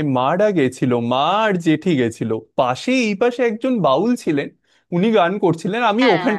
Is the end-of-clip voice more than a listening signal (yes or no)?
no